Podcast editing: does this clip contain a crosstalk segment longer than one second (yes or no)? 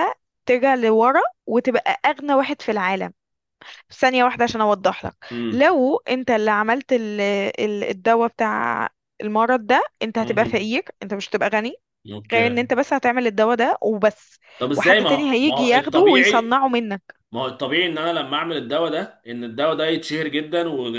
yes